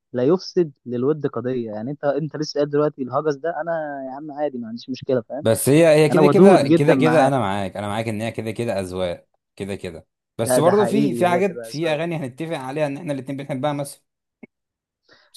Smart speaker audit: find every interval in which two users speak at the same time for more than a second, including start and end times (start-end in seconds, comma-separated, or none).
6.1-7.3, 10.4-12.0